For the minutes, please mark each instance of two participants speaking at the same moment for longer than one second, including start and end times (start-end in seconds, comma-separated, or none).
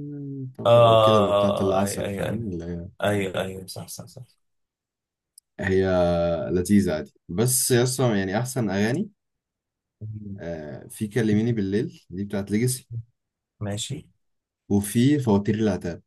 0.7-2.4